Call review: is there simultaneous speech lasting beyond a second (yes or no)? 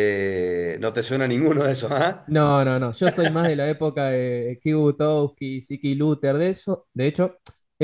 no